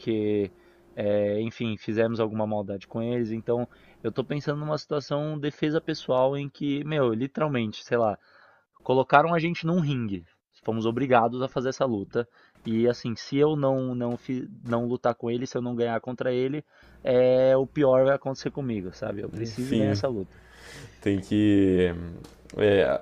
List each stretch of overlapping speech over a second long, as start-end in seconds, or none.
none